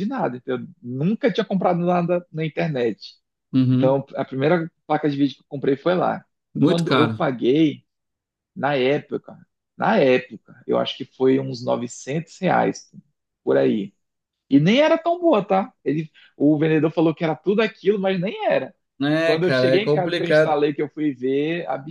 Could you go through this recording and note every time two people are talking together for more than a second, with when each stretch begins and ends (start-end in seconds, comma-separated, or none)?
19.2-20.5